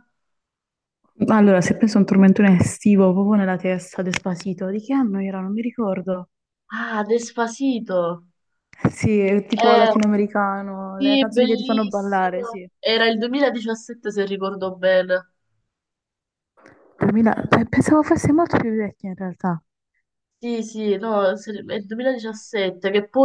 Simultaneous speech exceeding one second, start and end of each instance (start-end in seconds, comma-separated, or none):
10.9-12.7